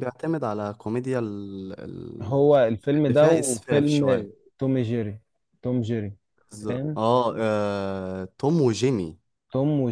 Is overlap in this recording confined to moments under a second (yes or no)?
no